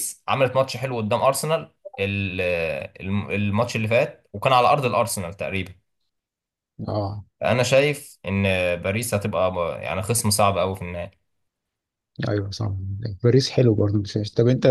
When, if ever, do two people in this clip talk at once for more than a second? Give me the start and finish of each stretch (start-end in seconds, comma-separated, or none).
none